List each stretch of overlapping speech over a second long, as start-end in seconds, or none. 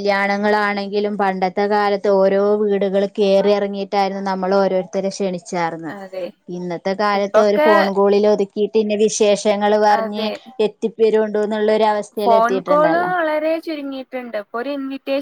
none